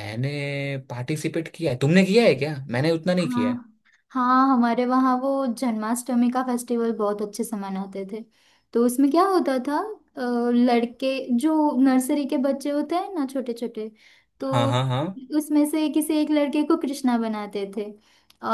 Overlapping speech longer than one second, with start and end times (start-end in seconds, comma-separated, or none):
none